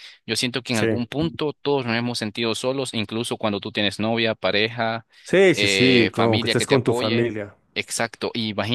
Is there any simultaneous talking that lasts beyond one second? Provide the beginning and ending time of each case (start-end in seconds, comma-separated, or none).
5.5-7.3